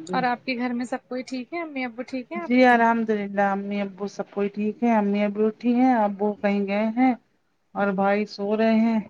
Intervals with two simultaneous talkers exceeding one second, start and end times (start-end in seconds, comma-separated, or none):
none